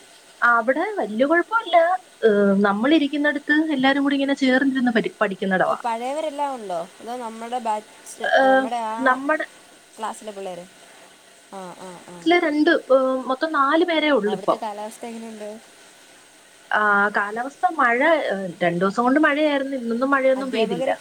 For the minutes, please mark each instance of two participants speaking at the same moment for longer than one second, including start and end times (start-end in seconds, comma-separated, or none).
none